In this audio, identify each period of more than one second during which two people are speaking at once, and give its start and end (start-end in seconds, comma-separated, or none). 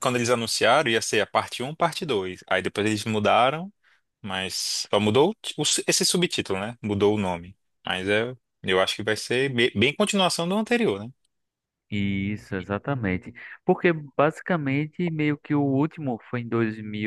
none